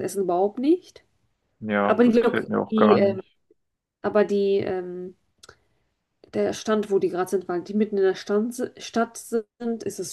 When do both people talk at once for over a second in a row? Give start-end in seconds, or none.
1.8-3.2